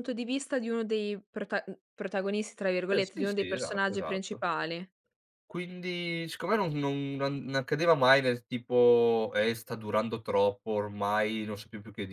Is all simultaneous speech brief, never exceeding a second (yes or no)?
no